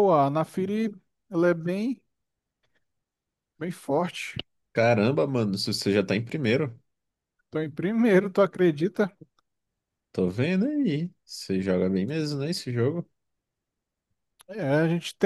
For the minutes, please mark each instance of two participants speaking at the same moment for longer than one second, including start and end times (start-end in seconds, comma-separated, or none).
none